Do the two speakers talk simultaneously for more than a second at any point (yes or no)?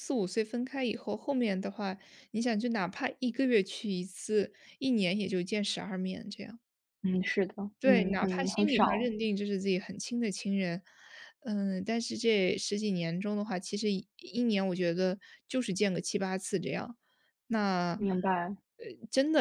yes